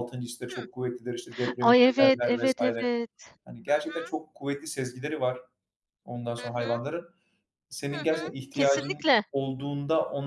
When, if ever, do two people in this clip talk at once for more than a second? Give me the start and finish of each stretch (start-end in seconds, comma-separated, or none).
1.6-2.9, 7.9-9.2